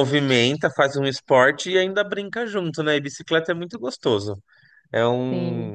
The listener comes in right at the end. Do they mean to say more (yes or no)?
no